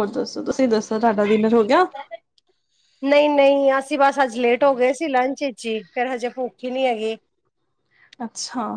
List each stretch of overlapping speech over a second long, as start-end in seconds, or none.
none